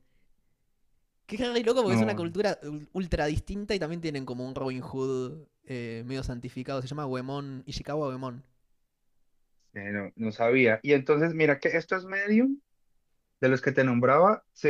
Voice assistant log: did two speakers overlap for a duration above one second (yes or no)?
no